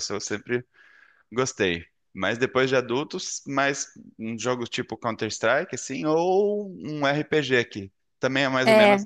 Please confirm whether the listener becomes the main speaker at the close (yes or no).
yes